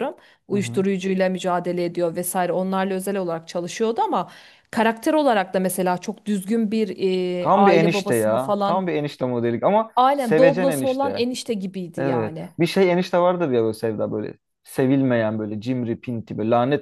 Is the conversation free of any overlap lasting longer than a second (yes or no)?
no